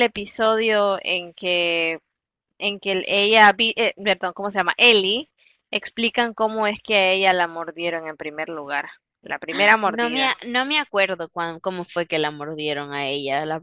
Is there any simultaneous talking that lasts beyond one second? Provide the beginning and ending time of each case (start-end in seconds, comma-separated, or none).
none